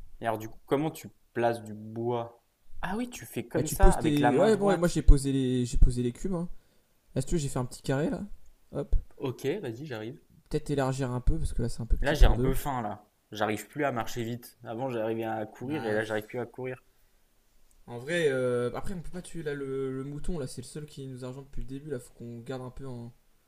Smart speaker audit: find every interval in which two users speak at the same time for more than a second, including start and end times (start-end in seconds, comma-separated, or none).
3.5-5.0